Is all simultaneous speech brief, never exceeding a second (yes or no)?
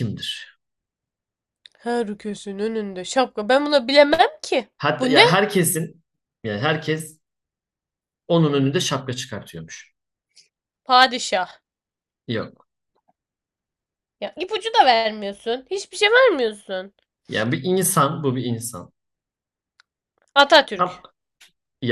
yes